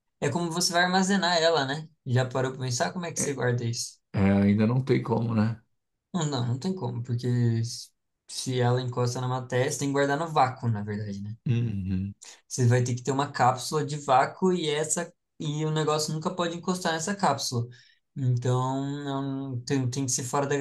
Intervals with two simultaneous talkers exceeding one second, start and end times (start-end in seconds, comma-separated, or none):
none